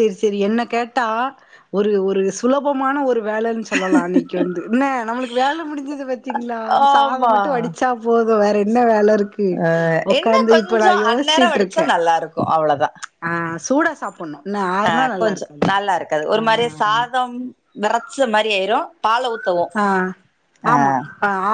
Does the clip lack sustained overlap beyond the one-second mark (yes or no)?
no